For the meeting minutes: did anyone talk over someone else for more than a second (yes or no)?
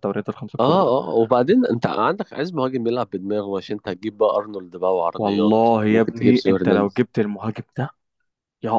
yes